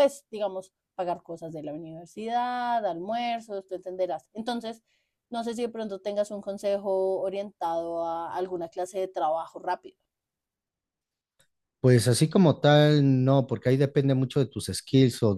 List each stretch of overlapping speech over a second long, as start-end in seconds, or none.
none